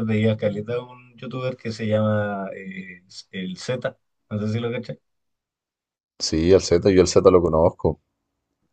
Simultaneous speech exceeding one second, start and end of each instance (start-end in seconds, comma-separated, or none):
none